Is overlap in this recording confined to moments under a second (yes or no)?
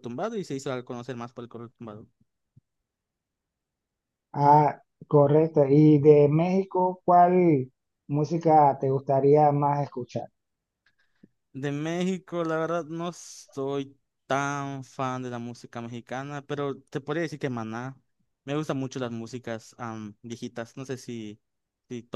yes